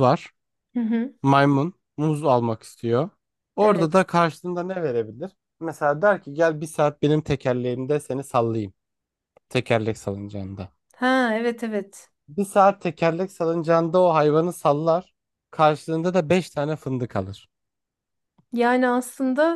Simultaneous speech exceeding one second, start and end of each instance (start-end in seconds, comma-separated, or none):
none